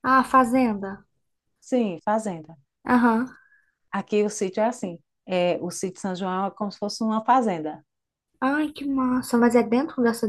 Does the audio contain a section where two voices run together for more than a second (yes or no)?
no